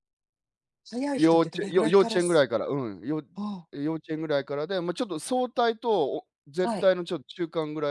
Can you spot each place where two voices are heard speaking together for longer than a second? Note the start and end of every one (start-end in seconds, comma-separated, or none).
1.1-2.5